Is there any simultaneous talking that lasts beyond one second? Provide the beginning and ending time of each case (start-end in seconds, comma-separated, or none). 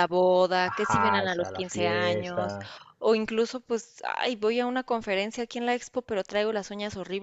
0.6-2.6